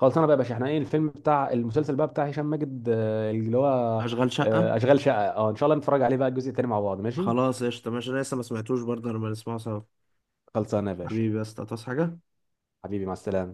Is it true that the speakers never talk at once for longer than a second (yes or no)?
yes